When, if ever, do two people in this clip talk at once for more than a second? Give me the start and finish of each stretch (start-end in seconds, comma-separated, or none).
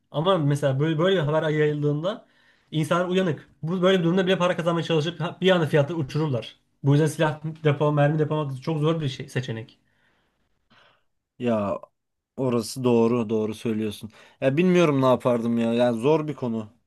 none